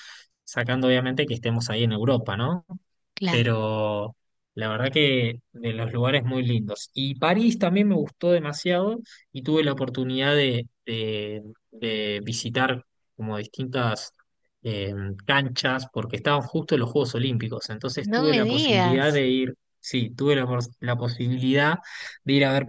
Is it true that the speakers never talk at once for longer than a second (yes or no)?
no